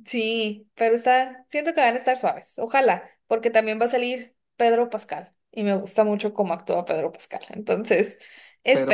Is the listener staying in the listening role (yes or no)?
no